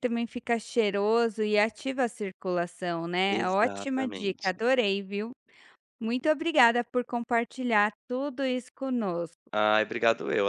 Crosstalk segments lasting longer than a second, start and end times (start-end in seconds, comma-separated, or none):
3.3-4.5